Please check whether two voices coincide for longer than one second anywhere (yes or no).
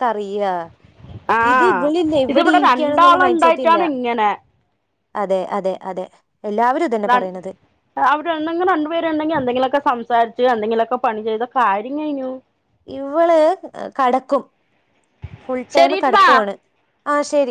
yes